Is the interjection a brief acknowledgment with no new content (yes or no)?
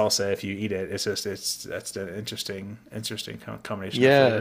no